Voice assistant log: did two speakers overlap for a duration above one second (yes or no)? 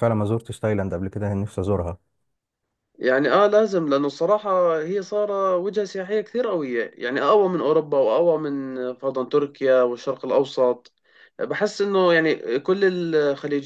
no